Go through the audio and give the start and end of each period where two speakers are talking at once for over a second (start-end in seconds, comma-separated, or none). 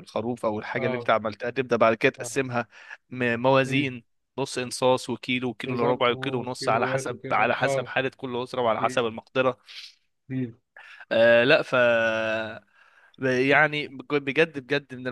5.7-7.9